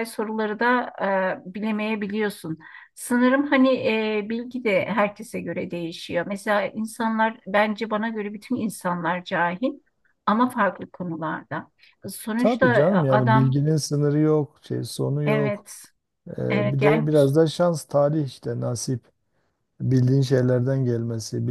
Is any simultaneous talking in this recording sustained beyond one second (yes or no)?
yes